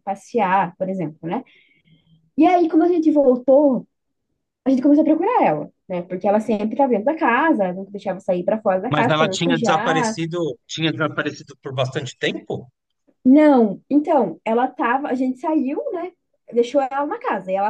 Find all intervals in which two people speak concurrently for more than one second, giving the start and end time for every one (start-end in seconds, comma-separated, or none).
8.9-10.2